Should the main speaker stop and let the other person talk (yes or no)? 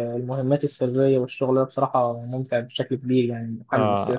yes